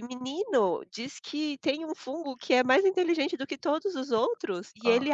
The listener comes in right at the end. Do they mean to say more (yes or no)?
no